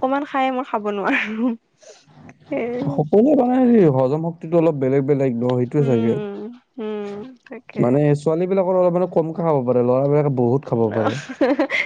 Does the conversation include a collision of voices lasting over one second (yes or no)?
no